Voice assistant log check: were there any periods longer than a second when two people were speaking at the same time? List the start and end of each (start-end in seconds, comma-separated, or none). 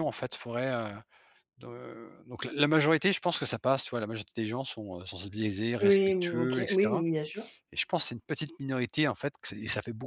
5.8-7.0